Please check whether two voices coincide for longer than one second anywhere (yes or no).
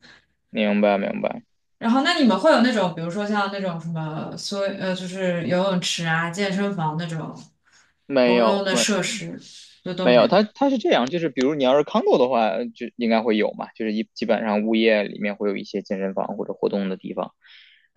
no